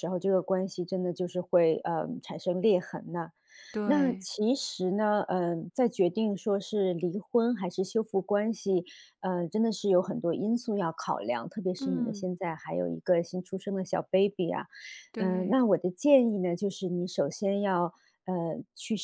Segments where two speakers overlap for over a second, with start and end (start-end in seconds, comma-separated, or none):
none